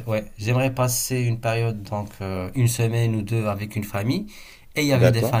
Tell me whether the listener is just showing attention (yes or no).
yes